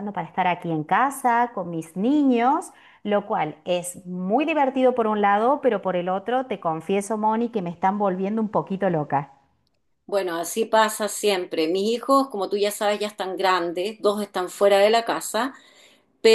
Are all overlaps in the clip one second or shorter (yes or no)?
yes